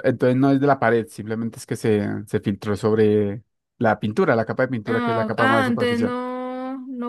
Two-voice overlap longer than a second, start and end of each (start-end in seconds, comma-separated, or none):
4.8-6.2